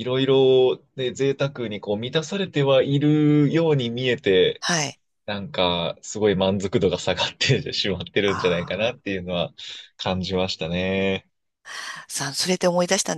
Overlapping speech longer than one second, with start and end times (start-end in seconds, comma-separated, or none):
none